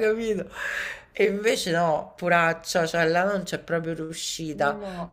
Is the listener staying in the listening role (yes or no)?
yes